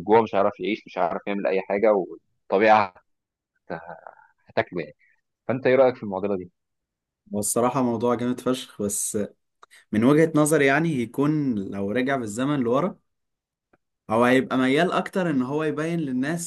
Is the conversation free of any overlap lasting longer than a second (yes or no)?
yes